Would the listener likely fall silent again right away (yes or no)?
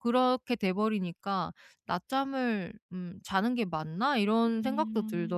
no